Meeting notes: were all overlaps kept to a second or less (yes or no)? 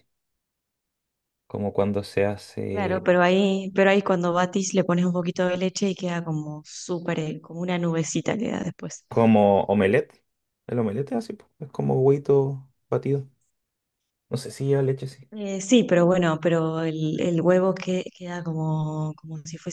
yes